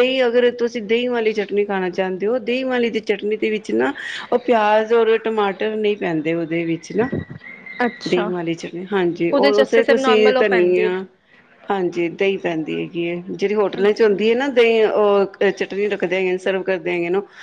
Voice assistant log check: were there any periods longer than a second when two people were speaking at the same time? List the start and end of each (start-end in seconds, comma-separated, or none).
9.3-10.9